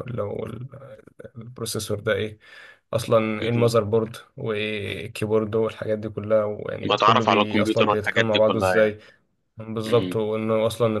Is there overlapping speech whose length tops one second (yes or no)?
yes